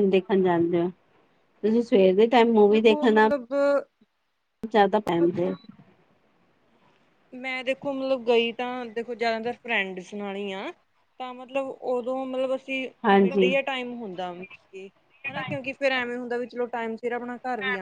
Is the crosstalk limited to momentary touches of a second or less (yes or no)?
yes